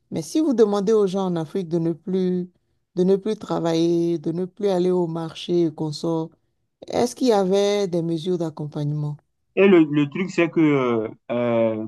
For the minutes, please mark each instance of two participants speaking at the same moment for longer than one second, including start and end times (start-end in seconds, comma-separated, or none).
none